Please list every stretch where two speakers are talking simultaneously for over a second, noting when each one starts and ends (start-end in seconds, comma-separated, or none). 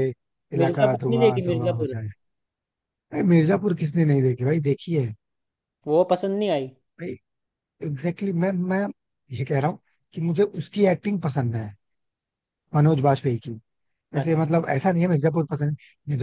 0.6-1.9